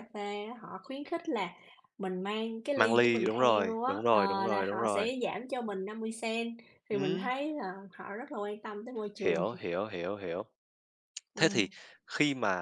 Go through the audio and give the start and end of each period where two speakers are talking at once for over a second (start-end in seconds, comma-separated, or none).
2.7-5.1